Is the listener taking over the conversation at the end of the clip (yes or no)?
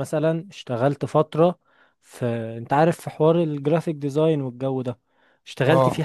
no